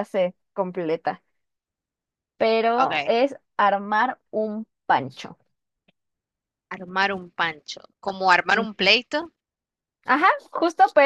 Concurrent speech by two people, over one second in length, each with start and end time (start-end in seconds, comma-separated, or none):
none